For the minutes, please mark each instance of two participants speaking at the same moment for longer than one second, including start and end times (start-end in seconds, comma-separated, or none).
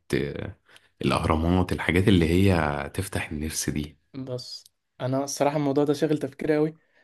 none